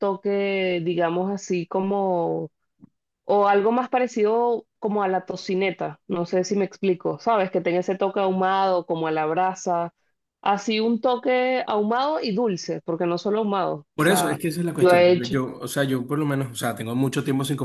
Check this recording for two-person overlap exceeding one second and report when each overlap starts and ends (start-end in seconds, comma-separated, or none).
13.9-15.3